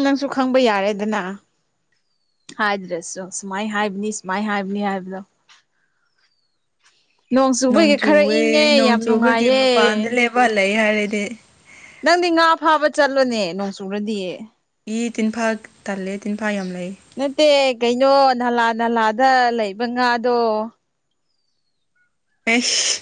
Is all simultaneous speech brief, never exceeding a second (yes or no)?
no